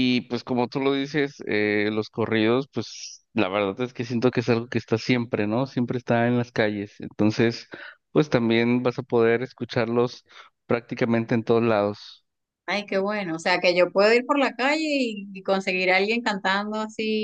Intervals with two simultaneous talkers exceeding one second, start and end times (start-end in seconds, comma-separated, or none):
none